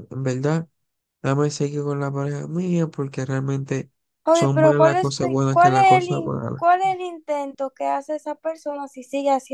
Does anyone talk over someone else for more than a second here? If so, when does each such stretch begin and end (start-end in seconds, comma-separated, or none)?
4.3-6.6